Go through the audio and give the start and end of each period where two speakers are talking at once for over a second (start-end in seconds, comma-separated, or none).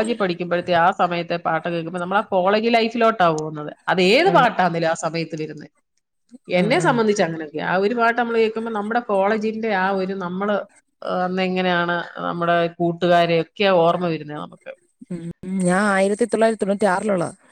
none